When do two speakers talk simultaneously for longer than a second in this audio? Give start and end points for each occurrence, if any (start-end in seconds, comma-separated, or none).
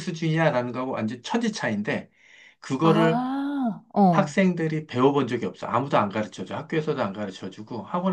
none